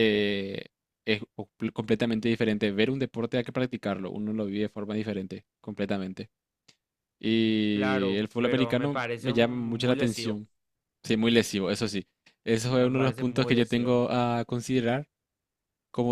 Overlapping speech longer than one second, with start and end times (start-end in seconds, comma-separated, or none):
7.7-10.4, 12.8-14.0